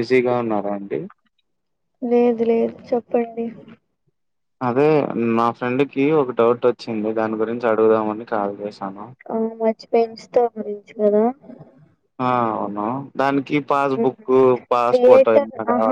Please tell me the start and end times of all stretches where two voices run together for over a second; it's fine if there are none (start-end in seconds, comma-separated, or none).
none